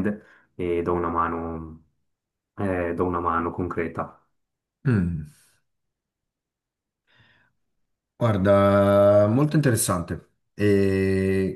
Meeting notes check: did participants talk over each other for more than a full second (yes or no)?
no